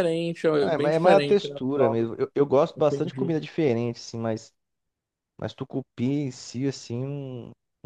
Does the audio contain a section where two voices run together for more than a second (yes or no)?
yes